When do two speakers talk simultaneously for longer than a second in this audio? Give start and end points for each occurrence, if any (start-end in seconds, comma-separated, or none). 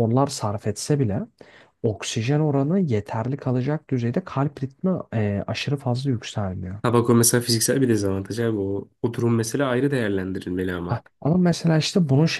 none